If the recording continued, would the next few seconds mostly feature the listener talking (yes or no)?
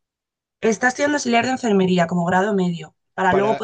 no